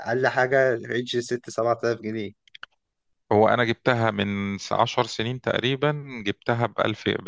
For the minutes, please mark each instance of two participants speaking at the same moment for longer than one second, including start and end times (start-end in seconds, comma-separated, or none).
none